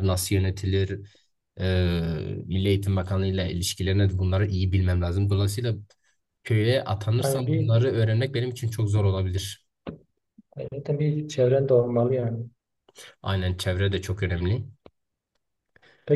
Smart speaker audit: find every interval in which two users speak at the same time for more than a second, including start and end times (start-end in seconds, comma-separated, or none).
none